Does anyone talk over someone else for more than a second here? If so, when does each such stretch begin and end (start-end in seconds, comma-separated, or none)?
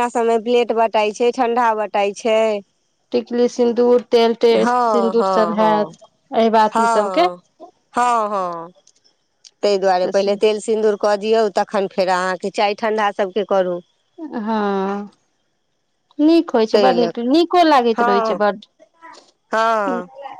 4.5-6.0